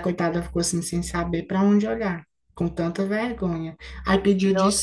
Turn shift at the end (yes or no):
no